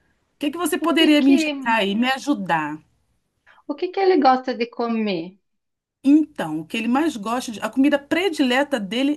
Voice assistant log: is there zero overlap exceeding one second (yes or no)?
yes